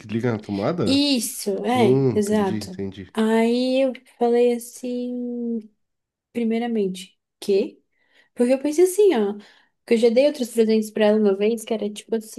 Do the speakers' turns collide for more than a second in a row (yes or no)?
yes